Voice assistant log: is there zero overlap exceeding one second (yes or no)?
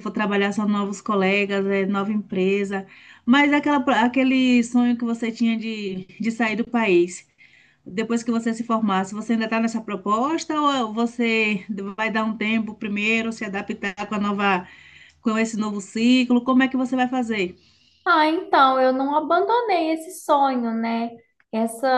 yes